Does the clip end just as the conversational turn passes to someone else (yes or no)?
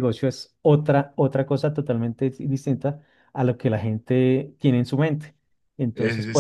no